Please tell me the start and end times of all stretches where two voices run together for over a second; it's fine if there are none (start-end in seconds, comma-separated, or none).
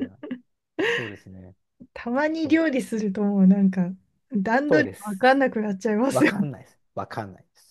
none